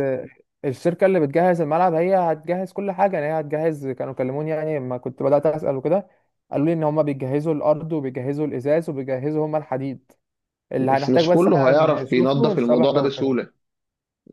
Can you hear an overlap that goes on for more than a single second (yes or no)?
yes